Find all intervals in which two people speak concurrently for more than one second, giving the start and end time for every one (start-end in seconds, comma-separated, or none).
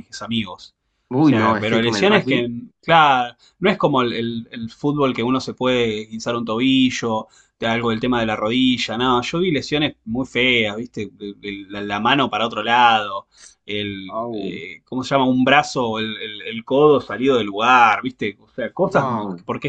1.2-2.5